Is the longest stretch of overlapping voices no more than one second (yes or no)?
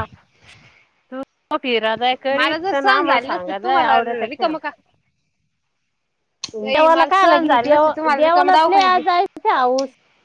no